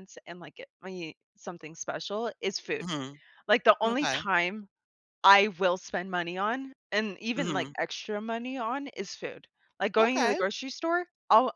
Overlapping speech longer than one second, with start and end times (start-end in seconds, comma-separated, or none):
none